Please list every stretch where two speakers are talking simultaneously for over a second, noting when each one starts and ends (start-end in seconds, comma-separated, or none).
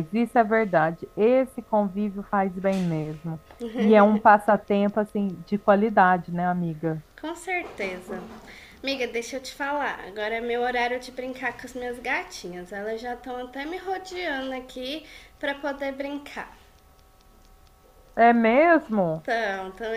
none